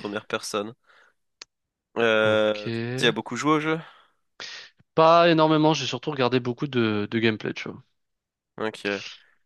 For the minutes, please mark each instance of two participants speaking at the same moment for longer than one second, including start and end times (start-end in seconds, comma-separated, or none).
none